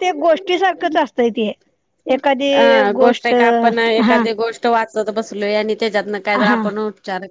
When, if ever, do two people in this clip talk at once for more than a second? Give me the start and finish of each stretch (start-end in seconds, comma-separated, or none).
none